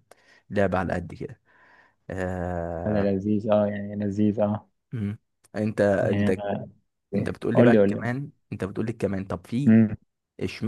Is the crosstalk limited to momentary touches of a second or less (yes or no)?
yes